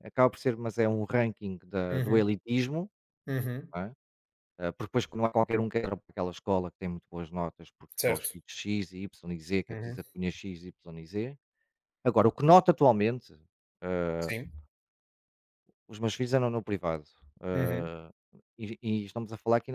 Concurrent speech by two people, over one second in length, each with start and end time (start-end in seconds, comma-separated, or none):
none